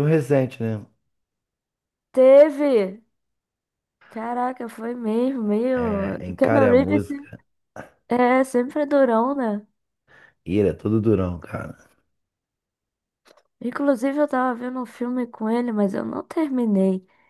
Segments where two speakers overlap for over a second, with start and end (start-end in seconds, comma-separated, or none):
5.7-7.3